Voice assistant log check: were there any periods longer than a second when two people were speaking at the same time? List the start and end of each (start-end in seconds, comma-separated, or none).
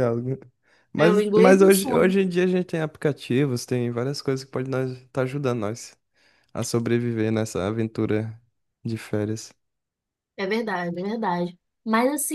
1.0-2.2